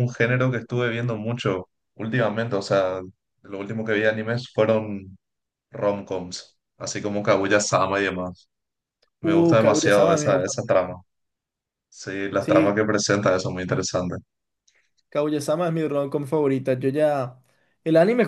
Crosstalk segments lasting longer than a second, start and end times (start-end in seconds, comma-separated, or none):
9.2-10.8